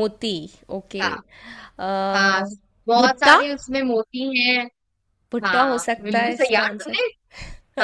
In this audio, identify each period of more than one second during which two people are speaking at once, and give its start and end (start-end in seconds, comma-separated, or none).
5.4-7.1